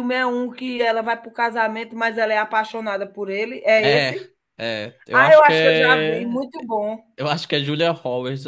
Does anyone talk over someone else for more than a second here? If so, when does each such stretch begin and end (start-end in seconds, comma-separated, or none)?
5.1-6.4